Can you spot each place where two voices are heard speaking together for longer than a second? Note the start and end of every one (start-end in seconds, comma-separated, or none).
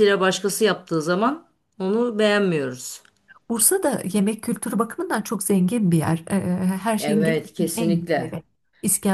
7.0-8.3